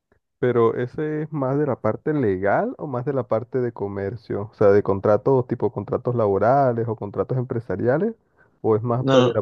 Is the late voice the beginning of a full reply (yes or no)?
no